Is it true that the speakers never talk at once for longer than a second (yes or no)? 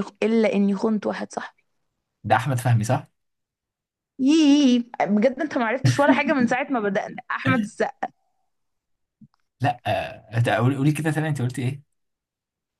yes